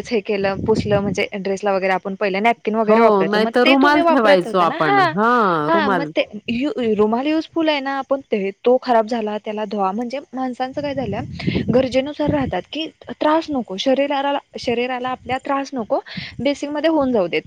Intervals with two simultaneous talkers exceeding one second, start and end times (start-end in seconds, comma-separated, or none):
2.9-5.0